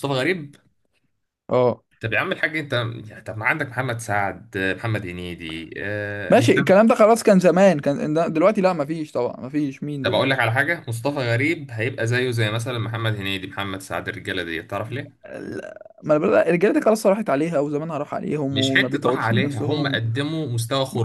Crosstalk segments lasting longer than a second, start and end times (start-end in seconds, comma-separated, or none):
18.5-20.0